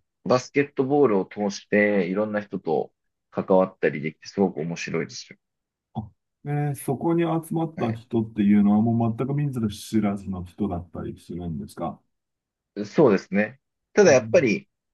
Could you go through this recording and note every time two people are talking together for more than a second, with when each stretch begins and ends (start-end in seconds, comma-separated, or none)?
none